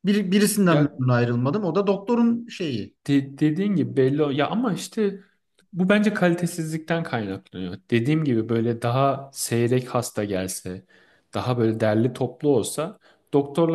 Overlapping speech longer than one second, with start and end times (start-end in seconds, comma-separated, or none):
none